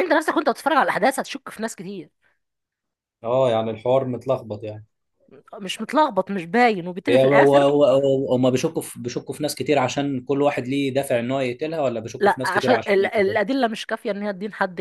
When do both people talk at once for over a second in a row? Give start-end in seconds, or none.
12.2-13.5